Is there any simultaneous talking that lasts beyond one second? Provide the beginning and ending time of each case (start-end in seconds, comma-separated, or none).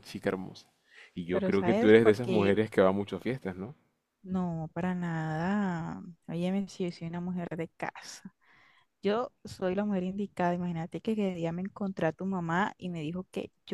1.3-2.6